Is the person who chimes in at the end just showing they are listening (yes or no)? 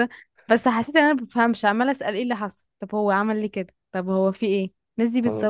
yes